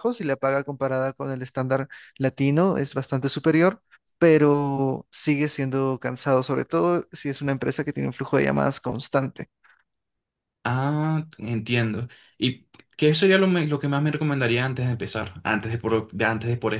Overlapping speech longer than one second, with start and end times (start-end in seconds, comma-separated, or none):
none